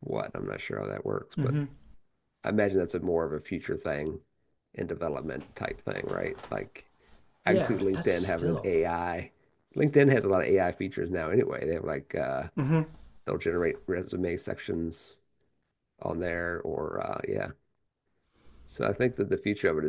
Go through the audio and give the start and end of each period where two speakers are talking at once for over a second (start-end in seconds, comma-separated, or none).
7.5-8.7